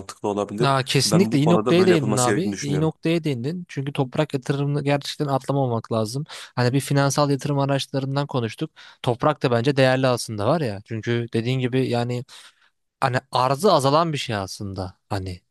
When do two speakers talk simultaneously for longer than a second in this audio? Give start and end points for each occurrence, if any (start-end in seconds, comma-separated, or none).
0.6-2.9